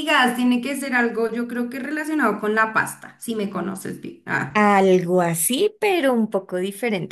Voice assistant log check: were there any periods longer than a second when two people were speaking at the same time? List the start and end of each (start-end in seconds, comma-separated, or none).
none